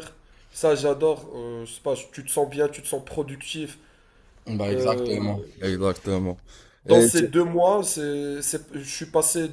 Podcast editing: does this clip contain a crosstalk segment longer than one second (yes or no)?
no